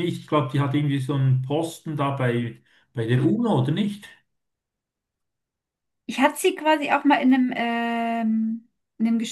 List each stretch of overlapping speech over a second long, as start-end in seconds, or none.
none